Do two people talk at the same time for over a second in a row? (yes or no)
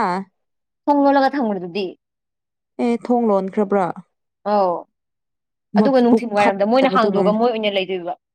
yes